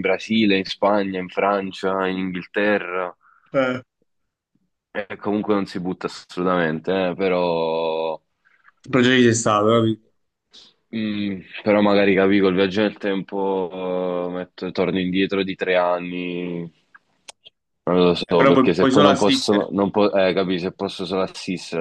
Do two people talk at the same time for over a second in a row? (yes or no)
yes